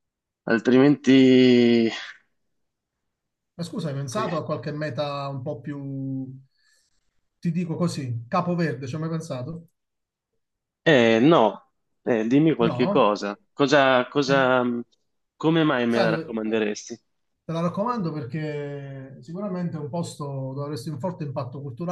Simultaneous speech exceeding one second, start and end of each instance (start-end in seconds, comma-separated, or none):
none